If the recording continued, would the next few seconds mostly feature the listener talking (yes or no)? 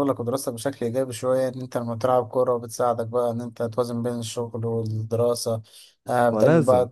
no